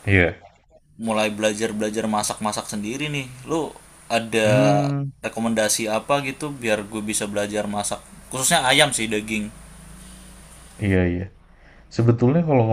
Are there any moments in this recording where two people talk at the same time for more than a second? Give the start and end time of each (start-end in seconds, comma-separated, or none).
none